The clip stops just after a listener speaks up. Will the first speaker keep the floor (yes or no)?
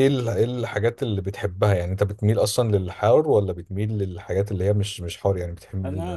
no